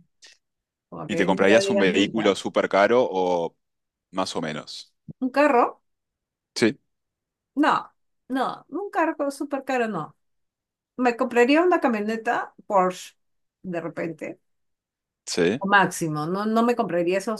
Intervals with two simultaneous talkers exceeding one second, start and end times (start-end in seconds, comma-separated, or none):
1.1-2.3